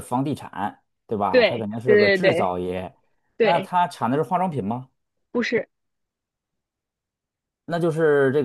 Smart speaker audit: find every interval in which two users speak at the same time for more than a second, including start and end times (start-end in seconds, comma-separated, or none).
1.3-2.5